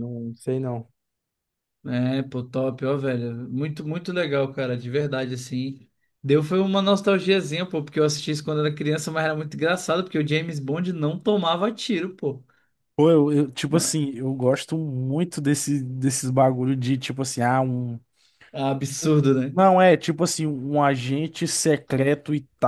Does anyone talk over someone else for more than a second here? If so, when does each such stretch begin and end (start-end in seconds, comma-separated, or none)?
none